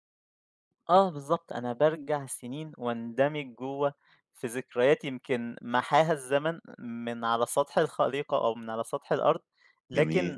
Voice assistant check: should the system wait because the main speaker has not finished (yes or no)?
yes